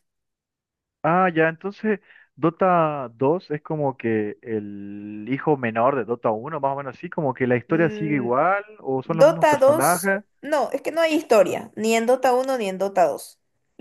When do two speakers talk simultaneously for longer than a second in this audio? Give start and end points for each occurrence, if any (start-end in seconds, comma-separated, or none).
9.0-10.2